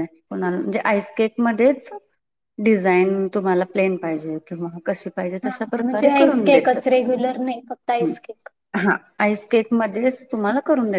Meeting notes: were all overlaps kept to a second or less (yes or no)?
no